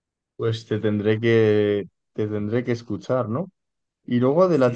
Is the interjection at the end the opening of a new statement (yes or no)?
no